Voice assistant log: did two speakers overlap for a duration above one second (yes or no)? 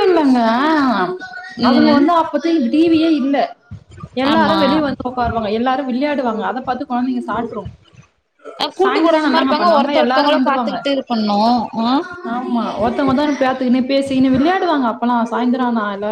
yes